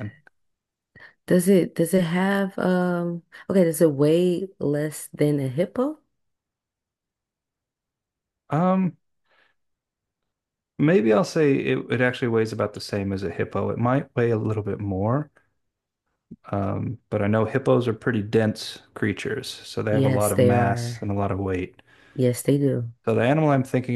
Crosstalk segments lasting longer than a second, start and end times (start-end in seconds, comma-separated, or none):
19.9-21.1